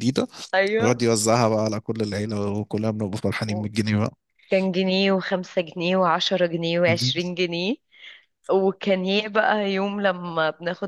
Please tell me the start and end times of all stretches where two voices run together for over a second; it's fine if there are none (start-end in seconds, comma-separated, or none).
none